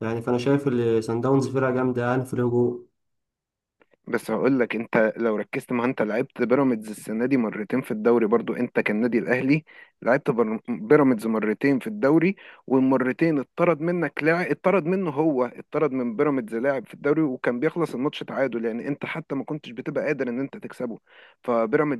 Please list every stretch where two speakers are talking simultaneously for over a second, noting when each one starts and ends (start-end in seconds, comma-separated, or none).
none